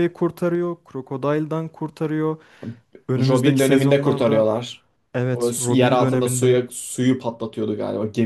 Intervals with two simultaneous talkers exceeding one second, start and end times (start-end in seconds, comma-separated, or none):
3.2-4.5, 5.3-6.6